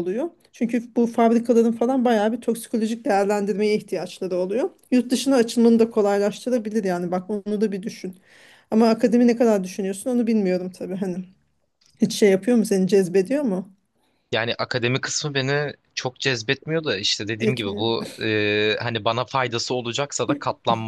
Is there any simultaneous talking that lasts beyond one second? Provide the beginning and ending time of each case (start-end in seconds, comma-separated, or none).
none